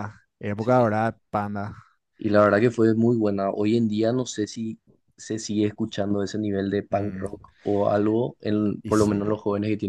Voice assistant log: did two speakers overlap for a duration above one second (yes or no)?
no